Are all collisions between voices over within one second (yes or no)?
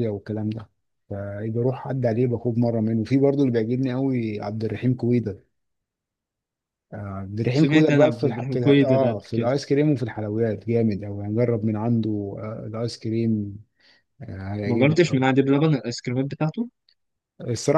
no